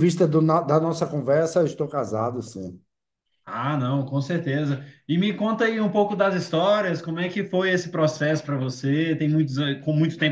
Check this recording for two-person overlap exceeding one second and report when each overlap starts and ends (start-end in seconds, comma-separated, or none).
none